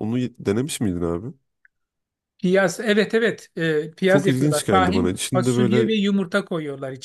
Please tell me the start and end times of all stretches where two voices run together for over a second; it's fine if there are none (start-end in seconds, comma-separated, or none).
4.1-5.9